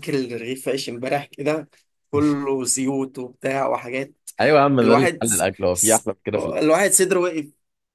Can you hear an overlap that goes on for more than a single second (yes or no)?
yes